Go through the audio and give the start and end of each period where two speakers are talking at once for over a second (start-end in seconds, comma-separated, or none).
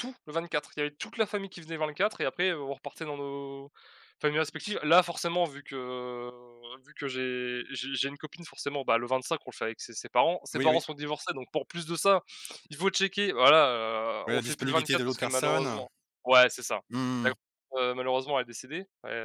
14.3-15.8